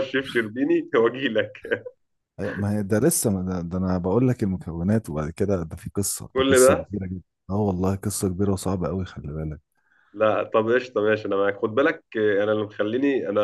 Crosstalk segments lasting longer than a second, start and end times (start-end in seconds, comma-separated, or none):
none